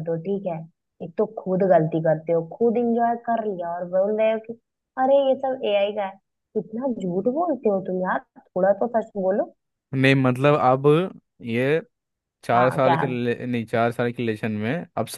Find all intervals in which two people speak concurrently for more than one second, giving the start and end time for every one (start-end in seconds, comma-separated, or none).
none